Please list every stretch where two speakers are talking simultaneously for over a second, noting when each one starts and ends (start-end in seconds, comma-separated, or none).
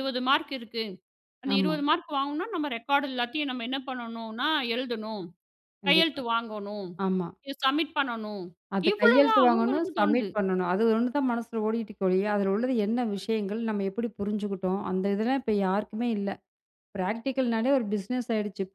8.9-10.3